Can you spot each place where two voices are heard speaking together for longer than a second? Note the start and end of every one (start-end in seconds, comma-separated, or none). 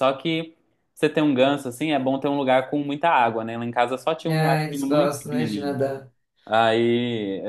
4.2-5.8